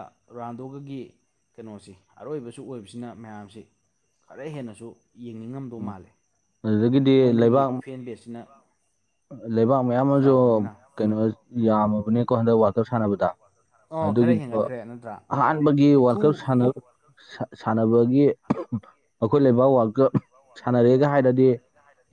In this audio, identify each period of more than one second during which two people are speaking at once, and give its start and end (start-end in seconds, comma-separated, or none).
none